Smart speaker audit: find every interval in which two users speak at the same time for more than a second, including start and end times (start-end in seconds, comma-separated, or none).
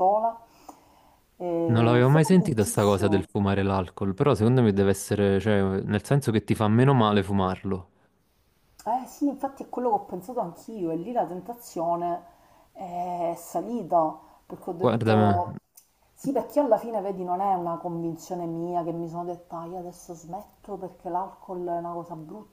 1.7-3.3